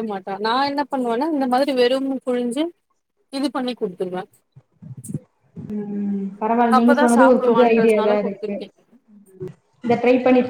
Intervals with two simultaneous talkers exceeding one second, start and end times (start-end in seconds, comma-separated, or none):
6.8-8.5